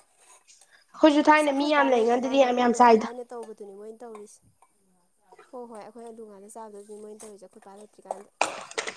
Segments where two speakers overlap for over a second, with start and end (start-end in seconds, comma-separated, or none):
1.4-3.1